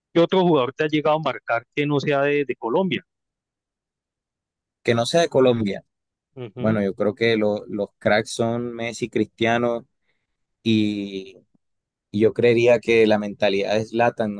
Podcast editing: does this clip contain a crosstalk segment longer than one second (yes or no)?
no